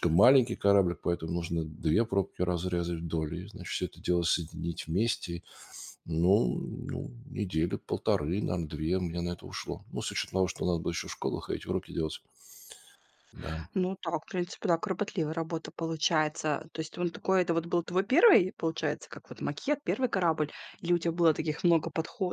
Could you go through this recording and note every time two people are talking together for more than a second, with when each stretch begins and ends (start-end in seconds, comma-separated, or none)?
none